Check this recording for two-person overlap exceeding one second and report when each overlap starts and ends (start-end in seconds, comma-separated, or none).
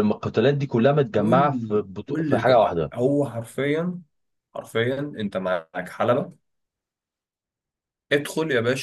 1.2-2.9